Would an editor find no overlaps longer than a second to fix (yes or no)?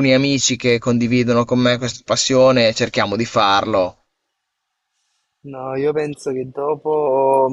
yes